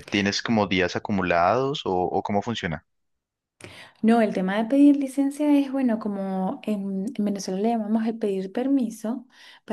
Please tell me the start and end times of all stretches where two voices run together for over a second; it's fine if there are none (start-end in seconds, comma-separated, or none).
none